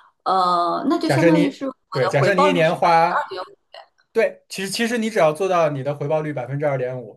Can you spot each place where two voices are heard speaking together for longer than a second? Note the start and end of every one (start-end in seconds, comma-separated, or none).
1.0-3.2